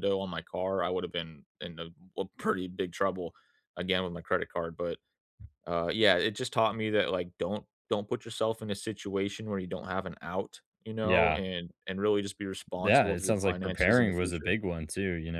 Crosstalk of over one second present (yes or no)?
yes